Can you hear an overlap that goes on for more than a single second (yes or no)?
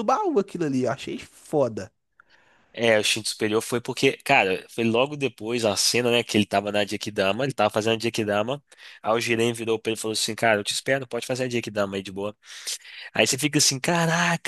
no